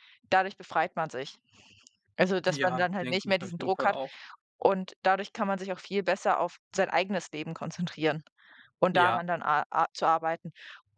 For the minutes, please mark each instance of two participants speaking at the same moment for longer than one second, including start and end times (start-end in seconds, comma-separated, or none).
2.5-4.0